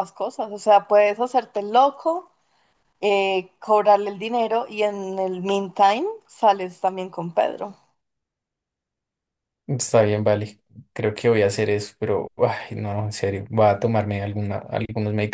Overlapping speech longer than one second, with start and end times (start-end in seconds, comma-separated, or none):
none